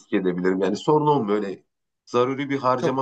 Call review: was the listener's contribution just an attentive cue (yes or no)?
no